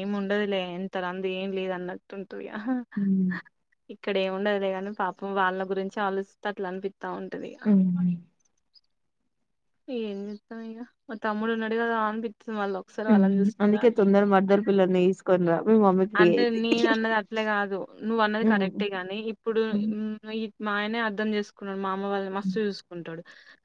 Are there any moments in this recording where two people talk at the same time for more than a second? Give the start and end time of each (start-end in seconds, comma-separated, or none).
none